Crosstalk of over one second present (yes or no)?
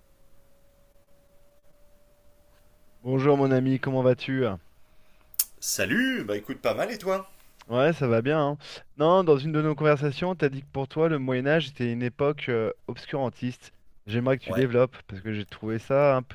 no